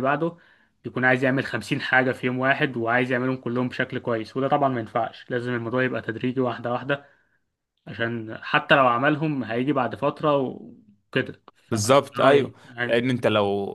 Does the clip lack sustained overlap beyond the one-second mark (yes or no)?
no